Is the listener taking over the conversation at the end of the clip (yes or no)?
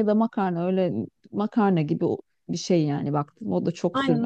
yes